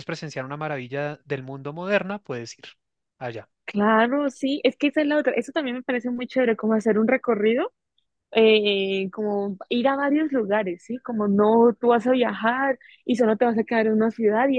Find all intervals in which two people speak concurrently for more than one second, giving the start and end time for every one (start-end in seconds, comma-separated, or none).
none